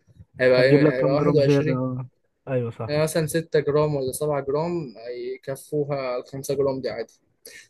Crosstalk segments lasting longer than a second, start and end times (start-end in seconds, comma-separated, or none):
0.6-1.8